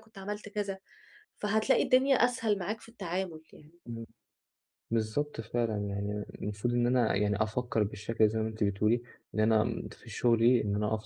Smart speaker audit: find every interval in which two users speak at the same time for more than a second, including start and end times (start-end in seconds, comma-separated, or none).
none